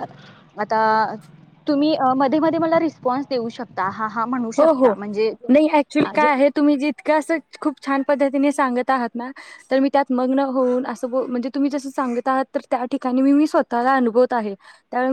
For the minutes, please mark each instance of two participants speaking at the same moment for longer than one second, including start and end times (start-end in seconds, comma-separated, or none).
none